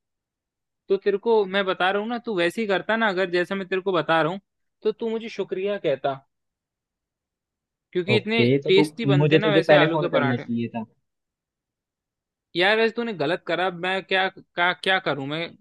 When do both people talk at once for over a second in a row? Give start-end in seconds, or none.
8.1-10.4